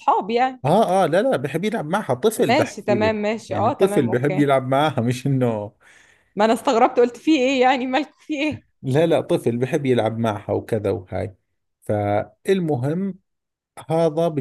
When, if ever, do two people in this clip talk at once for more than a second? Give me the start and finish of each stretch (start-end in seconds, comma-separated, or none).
2.5-4.5